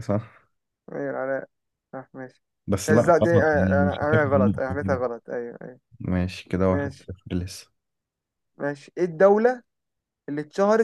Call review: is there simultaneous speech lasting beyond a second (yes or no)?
yes